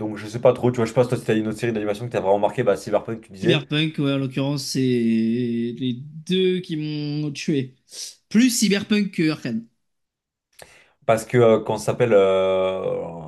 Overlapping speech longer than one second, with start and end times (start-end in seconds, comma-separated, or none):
none